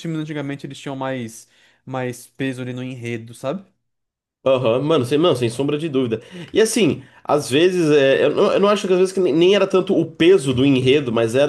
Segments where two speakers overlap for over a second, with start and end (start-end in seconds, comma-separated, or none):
none